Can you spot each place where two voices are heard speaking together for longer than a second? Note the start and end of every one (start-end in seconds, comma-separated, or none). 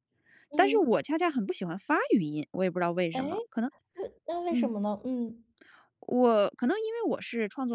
none